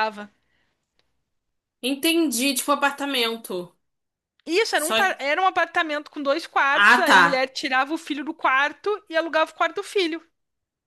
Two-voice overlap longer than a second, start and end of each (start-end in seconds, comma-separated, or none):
none